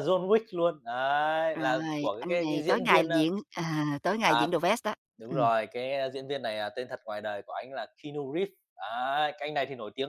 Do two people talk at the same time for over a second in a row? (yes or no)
yes